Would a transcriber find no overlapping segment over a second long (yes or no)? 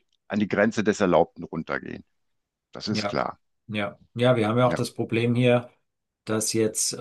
yes